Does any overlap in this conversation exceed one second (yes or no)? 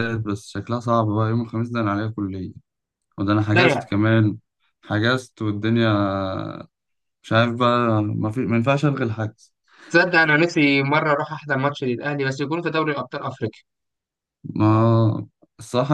no